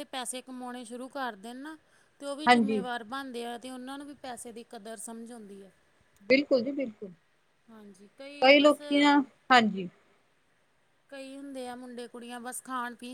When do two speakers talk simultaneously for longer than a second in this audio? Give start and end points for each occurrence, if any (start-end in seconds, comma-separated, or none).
none